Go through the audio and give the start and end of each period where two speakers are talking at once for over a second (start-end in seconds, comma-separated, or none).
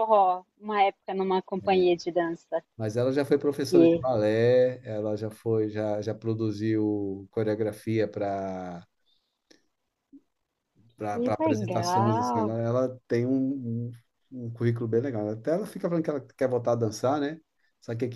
11.1-12.5